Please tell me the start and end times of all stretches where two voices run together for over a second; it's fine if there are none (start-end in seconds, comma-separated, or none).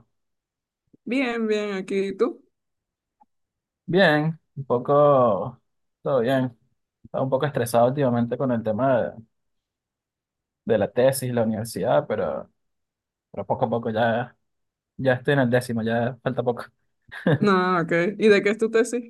none